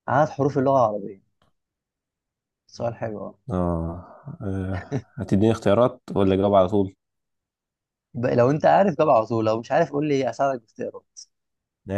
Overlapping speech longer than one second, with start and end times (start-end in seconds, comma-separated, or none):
none